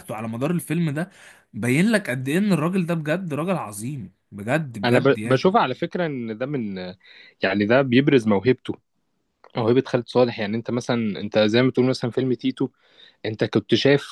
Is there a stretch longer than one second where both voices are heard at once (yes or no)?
no